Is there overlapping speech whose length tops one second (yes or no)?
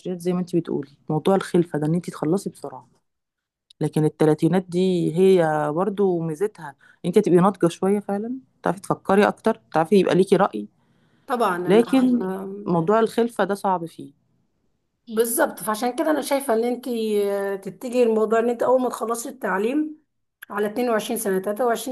no